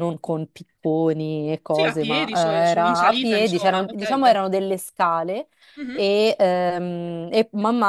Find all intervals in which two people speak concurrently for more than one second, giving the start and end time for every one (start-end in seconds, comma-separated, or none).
1.7-4.3